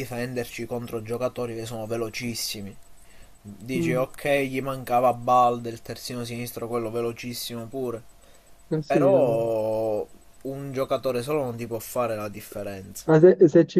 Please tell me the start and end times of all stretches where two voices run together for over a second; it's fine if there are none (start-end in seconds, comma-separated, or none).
none